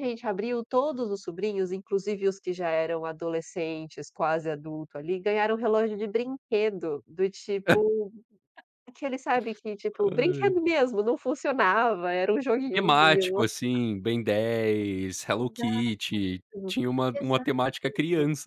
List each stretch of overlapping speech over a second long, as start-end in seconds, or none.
none